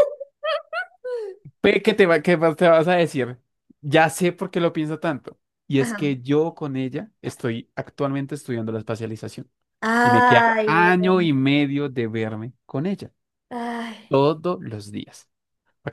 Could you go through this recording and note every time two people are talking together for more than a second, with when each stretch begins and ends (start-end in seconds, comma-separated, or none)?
10.0-11.3